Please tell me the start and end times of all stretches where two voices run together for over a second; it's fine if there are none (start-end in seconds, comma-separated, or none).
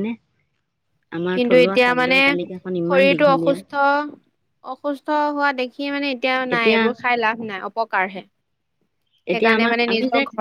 1.4-3.5